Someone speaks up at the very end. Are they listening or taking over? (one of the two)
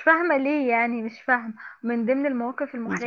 listening